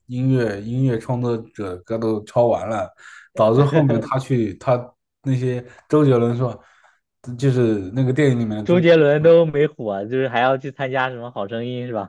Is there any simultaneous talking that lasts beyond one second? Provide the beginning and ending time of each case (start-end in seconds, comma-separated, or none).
none